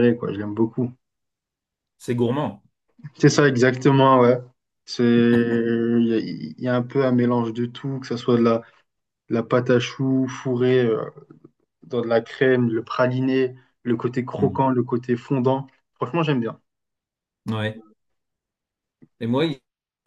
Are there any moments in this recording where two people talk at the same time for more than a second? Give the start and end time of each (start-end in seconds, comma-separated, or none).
none